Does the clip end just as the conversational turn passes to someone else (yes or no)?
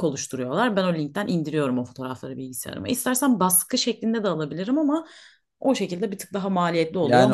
yes